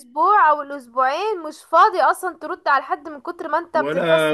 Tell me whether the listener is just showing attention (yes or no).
no